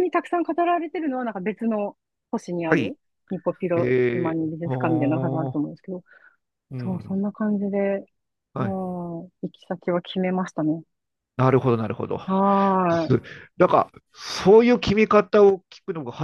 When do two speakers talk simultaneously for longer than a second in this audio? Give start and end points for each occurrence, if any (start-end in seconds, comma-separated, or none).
3.8-5.6